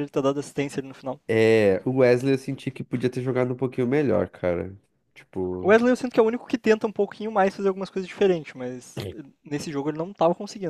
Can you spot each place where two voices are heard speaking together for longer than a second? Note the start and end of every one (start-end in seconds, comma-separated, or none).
none